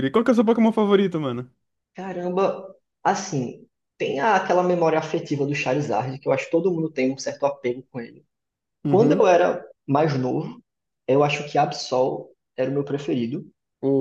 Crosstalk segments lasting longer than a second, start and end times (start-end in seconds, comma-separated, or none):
none